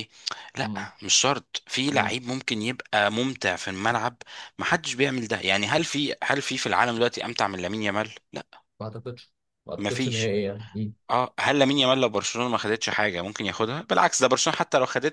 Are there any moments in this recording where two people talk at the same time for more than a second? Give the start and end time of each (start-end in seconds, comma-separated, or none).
none